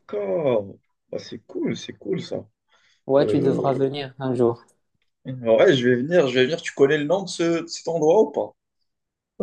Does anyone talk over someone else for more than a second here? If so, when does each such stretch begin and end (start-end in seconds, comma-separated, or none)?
none